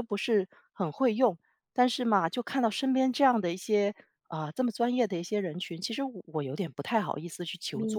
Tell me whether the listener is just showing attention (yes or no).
no